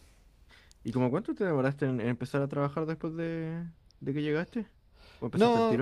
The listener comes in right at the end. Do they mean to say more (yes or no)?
yes